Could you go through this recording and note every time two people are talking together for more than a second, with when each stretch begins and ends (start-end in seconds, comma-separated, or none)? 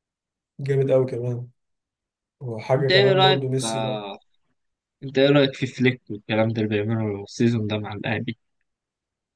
2.7-4.0